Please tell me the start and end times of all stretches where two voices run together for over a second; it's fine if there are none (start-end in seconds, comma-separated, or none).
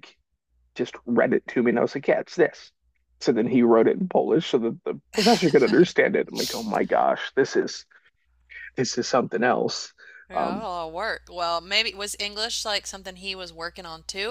none